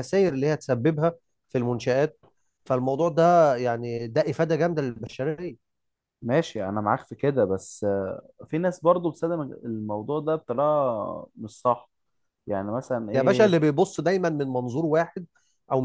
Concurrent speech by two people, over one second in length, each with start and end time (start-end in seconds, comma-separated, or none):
none